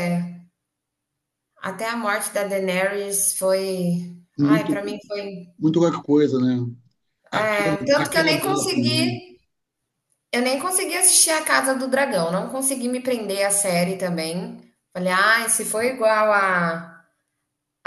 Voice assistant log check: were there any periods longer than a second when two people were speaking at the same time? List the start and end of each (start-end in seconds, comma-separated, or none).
7.3-9.2